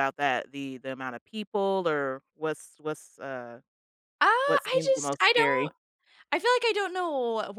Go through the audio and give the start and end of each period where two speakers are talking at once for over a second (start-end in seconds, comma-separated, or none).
4.4-5.7